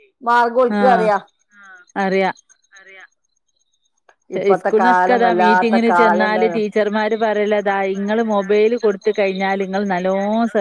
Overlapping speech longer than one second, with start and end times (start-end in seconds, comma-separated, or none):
4.4-6.6